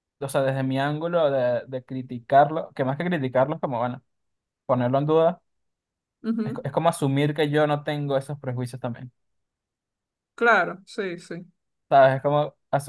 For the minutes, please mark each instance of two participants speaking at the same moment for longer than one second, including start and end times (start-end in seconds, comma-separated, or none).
none